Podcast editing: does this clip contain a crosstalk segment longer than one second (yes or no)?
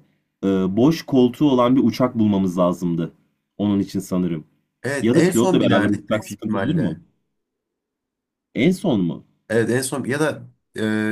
yes